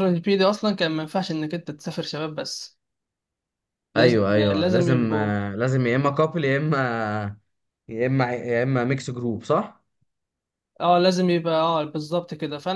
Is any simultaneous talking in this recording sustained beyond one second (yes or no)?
yes